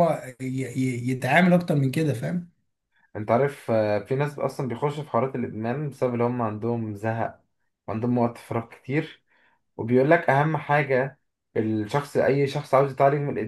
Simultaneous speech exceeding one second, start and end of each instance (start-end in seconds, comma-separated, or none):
none